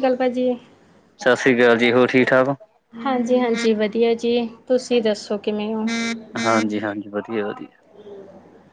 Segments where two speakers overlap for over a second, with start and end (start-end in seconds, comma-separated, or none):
none